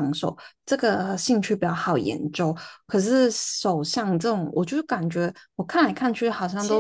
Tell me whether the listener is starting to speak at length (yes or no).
no